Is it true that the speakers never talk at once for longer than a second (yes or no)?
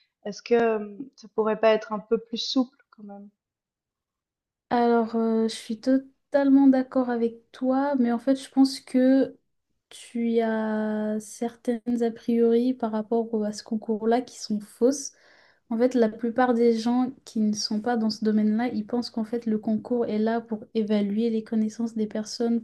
yes